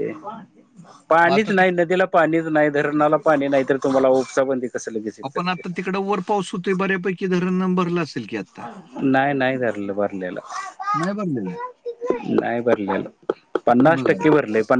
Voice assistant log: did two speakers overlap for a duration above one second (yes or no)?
no